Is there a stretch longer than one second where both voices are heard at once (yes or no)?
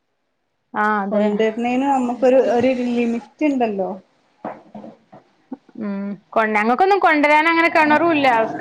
no